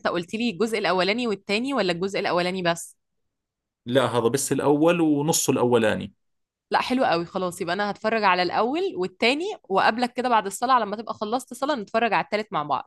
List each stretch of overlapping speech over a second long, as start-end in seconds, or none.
none